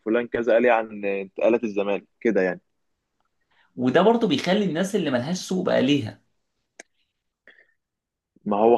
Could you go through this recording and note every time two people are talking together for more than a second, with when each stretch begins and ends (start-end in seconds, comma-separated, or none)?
none